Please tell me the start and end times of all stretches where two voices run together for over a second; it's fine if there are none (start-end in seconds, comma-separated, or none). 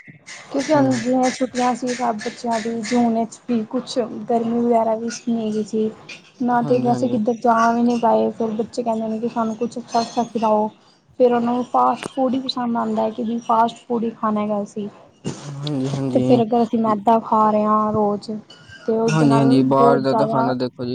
19.1-20.4